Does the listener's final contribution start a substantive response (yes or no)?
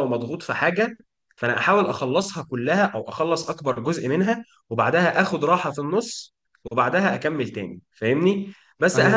no